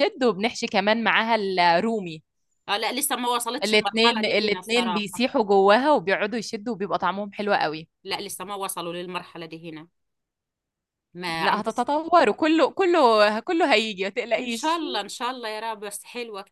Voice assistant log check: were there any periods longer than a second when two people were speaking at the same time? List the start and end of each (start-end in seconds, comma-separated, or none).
3.6-5.2